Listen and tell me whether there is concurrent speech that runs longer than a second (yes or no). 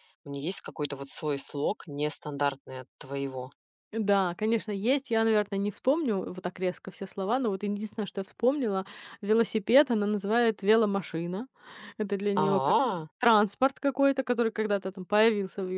no